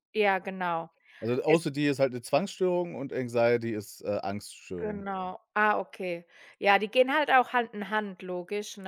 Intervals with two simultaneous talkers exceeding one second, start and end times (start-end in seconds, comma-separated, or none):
none